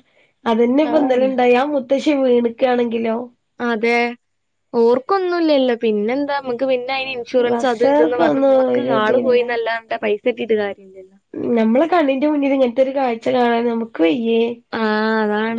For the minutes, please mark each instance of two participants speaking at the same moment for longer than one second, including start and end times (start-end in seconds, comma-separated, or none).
7.5-9.4